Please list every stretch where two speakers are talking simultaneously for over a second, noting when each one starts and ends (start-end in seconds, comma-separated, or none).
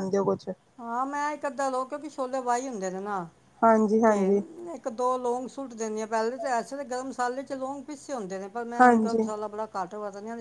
none